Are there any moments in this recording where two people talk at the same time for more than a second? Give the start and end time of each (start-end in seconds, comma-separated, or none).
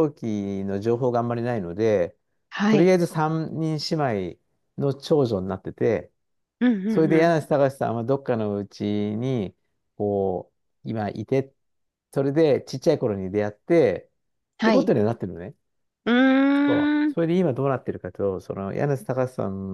none